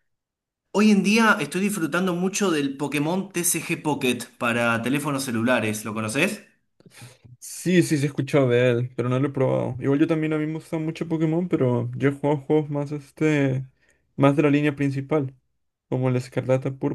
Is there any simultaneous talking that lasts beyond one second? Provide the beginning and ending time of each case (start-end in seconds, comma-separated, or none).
none